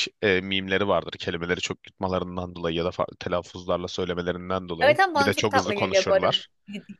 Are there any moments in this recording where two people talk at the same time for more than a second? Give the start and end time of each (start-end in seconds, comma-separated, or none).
4.8-6.4